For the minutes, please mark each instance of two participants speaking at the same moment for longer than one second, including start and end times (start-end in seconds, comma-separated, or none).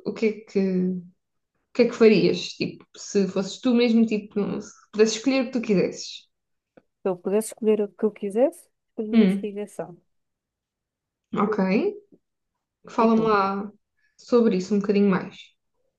none